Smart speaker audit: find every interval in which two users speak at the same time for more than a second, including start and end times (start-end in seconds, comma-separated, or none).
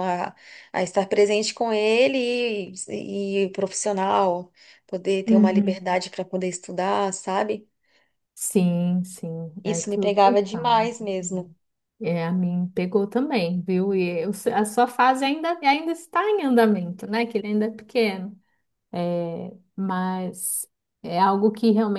9.6-10.9